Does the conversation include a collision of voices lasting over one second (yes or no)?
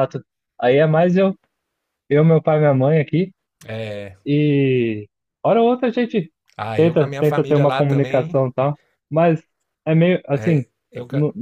yes